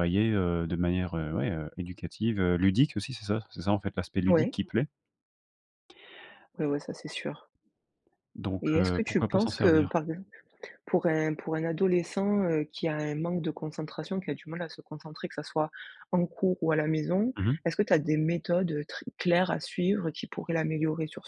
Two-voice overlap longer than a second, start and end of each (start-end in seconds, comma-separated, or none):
8.6-9.9